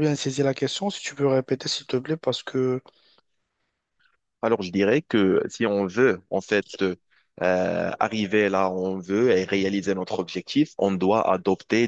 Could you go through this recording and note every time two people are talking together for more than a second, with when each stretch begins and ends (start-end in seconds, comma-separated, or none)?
none